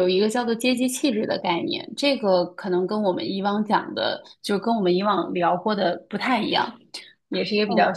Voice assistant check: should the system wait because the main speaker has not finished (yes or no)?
yes